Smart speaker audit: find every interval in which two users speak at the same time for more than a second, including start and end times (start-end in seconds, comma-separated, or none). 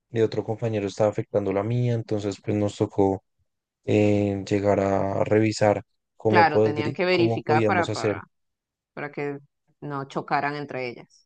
6.3-8.2